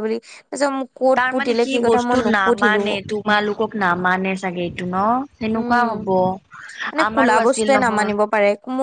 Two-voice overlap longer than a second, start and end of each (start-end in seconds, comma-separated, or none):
1.2-3.0